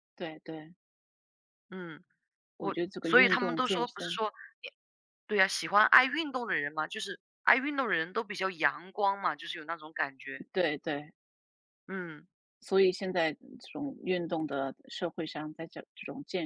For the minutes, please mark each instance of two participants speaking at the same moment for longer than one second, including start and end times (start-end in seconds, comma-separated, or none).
2.6-4.2